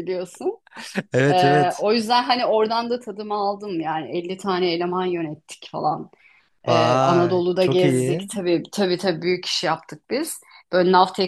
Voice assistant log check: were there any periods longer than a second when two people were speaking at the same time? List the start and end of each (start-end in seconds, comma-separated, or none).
6.7-8.3